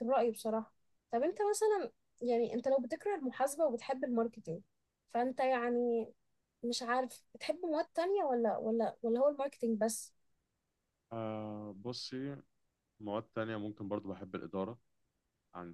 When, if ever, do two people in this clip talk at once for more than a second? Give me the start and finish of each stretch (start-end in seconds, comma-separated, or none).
none